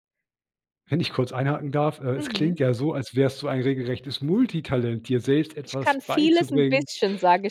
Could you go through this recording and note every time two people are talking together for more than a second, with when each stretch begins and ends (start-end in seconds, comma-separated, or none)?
5.6-6.9